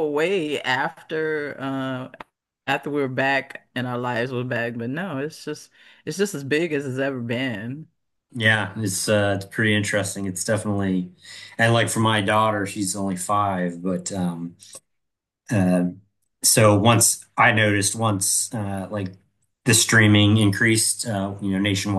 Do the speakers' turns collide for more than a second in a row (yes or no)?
no